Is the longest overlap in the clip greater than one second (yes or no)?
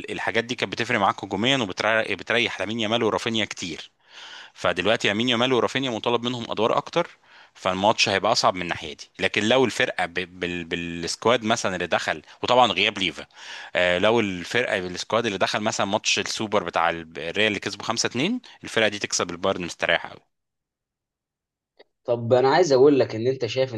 no